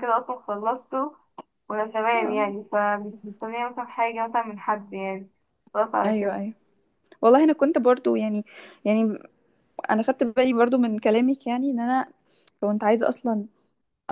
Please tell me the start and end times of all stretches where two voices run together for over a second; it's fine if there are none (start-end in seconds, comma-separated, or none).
none